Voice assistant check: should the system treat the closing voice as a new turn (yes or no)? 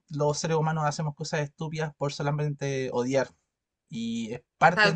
no